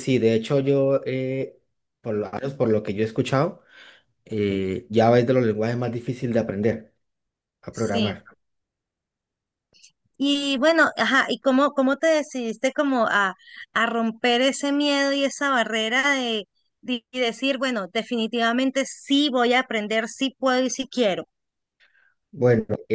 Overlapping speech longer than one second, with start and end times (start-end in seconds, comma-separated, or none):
none